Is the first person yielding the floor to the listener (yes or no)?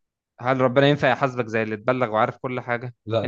no